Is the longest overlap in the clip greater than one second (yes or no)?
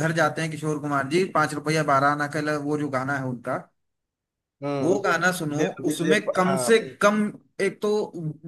yes